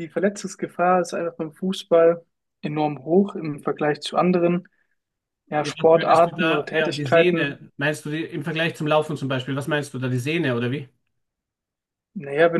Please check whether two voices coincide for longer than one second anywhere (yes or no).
yes